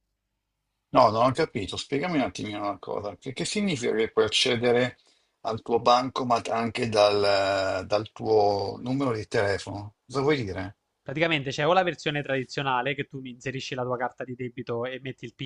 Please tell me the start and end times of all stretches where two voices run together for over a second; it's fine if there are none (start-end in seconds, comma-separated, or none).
none